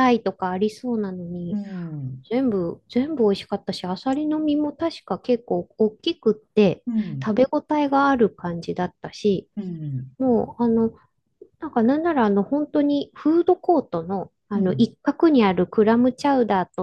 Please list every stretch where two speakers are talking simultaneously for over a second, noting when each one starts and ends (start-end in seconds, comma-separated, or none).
none